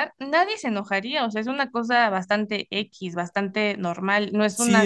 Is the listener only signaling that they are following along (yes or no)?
no